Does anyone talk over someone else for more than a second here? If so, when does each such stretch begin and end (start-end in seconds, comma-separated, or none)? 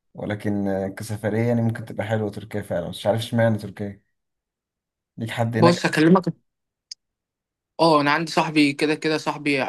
none